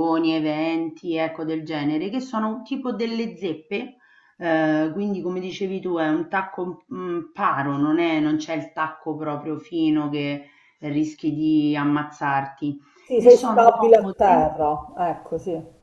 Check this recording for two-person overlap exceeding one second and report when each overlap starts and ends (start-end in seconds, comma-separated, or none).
13.1-14.5